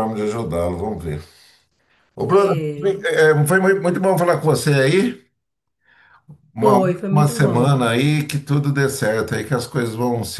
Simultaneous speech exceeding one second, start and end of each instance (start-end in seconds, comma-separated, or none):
6.6-7.9